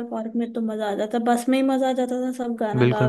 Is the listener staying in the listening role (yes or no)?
no